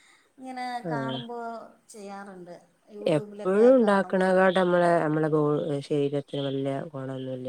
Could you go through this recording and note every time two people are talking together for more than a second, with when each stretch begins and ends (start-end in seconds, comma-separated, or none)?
3.2-4.4